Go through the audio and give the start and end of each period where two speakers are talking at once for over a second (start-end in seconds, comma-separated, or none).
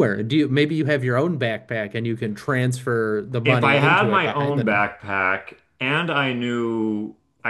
3.4-4.8